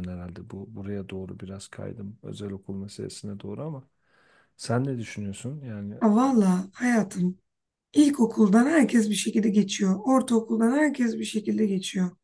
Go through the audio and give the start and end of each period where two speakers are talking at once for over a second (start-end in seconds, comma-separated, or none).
none